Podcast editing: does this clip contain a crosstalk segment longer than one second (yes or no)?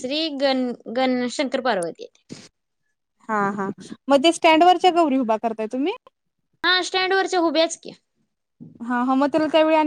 no